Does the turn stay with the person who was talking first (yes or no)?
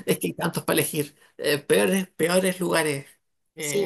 no